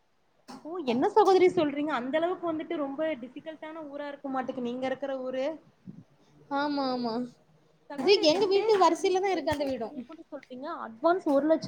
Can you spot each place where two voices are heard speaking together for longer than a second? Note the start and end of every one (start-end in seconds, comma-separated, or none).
8.0-9.9